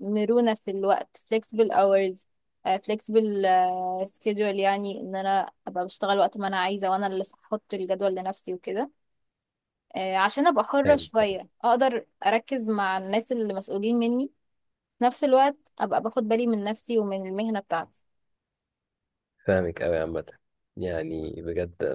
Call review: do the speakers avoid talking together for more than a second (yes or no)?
yes